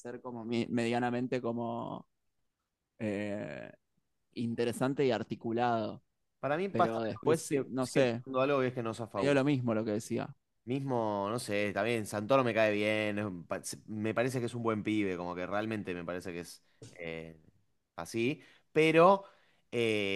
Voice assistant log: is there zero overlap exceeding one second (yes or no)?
no